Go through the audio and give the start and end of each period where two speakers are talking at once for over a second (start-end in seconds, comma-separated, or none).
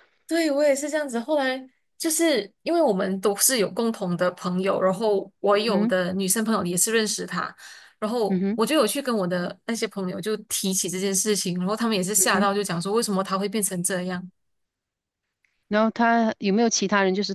none